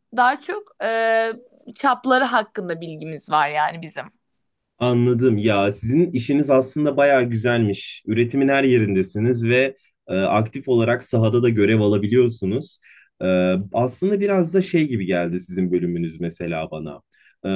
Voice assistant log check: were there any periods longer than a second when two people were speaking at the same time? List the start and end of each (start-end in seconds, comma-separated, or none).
none